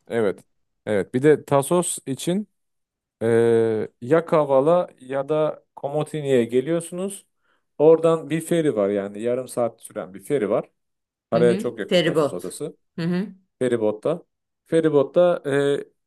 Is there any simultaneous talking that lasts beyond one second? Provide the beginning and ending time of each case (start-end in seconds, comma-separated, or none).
11.3-12.6